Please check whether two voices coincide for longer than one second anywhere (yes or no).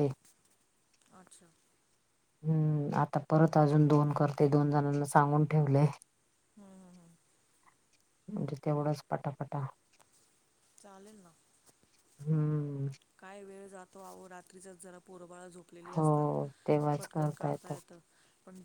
no